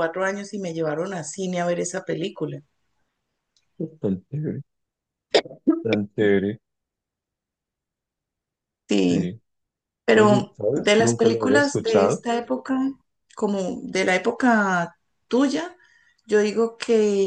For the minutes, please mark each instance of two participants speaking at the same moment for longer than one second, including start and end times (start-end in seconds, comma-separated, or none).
10.1-12.2